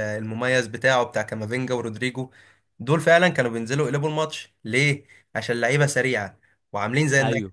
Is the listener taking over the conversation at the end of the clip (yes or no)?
no